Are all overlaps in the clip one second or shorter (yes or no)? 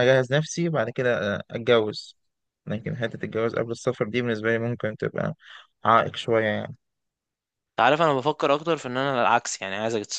yes